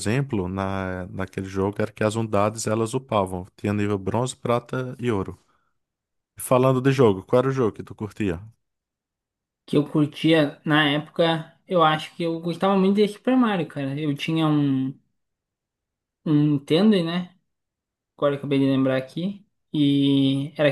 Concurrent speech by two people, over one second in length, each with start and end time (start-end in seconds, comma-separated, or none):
none